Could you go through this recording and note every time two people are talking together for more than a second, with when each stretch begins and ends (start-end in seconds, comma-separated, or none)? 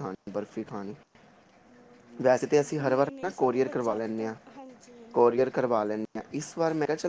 2.8-4.3